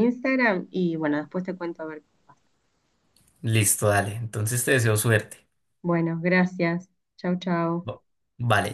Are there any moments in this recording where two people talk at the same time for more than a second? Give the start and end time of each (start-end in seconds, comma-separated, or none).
none